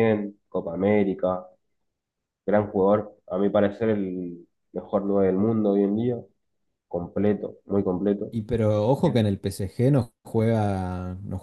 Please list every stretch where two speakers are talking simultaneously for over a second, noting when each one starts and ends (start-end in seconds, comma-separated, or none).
none